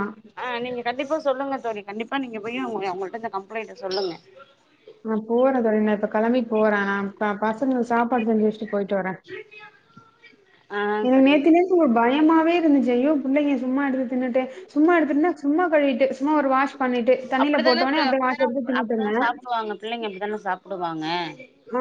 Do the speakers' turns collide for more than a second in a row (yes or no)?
yes